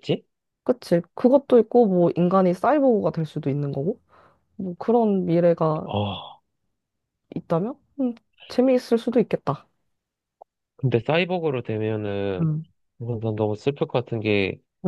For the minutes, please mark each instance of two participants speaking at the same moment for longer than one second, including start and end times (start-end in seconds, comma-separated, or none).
none